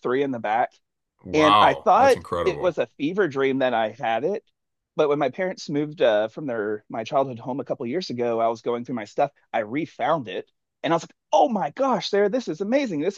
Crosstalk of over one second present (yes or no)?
yes